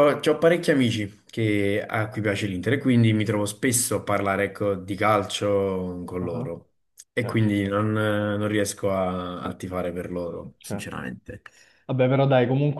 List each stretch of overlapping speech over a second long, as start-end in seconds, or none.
none